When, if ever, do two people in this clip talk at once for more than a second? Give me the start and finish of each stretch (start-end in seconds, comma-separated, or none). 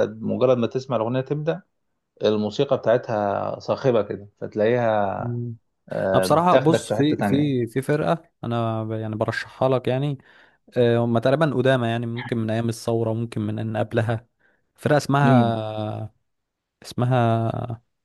6.1-7.5